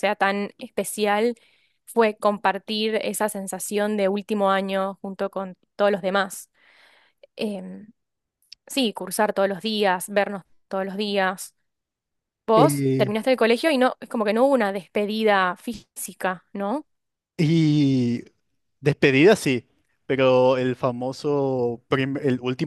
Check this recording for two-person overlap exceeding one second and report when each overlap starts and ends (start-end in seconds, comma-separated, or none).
none